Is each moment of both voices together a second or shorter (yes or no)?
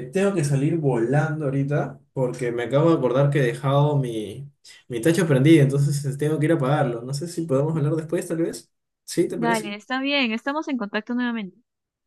yes